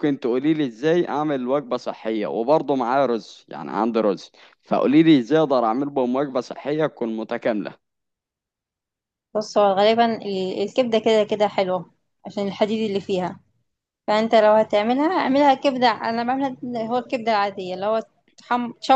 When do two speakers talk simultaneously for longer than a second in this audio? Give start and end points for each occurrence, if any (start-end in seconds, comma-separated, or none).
none